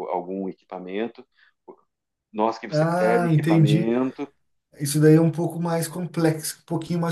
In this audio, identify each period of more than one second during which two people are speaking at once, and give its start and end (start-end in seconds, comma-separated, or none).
2.7-3.9